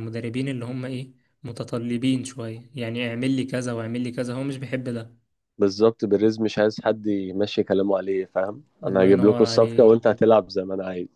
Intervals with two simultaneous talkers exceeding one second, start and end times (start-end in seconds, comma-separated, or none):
8.8-10.1